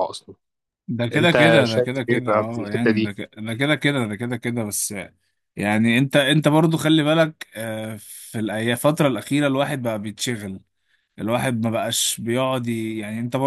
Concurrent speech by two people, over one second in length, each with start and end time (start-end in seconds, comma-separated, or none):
1.1-3.1